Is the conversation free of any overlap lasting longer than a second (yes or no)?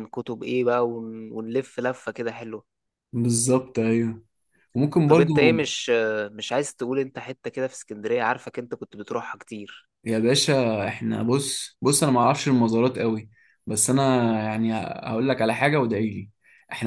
yes